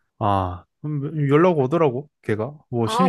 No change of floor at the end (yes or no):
no